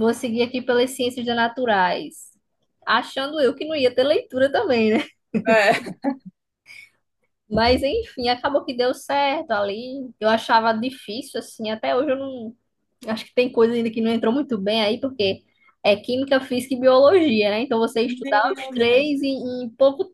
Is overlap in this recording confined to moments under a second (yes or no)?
no